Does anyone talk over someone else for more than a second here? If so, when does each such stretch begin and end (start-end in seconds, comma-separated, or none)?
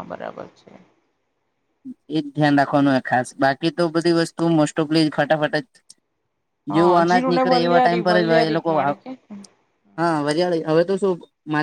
6.7-9.0